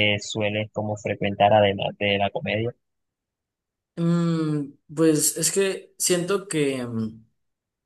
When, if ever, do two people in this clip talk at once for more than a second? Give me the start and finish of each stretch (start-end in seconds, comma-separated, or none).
none